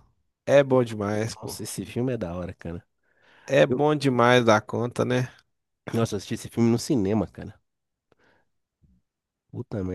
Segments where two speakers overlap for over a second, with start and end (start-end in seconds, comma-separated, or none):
none